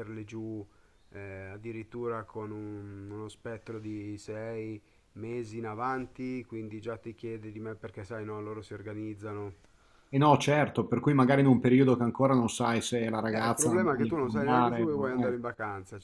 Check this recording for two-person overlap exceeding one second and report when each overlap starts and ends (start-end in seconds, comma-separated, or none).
13.3-15.4